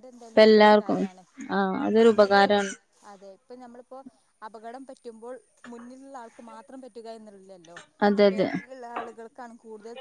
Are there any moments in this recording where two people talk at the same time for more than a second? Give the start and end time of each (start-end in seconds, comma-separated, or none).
none